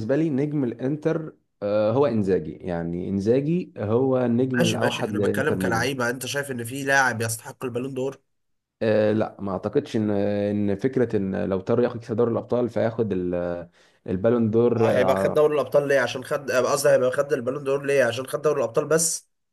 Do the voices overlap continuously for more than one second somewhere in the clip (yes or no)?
yes